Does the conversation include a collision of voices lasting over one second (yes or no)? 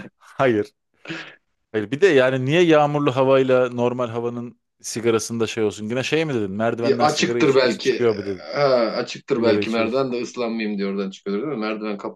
yes